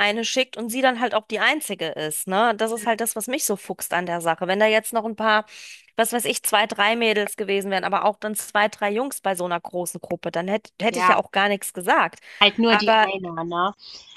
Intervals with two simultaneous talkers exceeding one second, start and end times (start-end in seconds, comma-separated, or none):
none